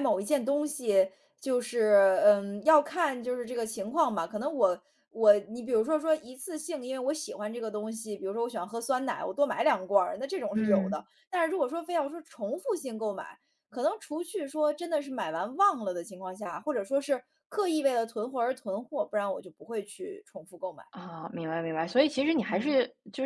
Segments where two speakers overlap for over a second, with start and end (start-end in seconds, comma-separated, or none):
none